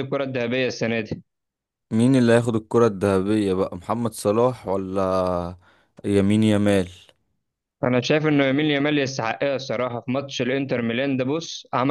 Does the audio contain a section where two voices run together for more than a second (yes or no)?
no